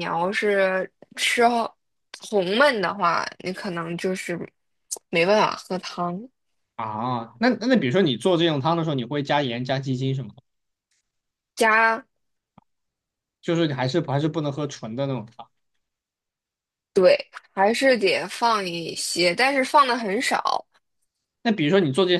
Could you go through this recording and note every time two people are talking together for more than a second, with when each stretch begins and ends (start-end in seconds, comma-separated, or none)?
none